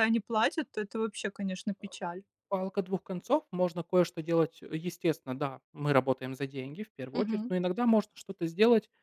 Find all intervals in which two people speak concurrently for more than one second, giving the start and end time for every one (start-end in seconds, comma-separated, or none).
none